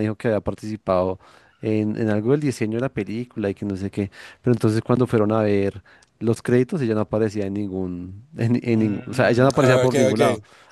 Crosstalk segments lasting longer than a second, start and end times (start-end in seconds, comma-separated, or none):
8.7-10.2